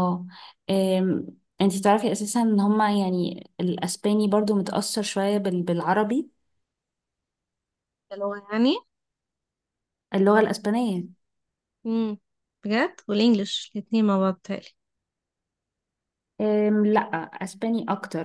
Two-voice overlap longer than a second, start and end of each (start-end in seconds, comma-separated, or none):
none